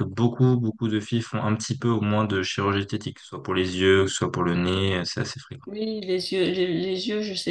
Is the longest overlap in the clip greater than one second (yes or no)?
no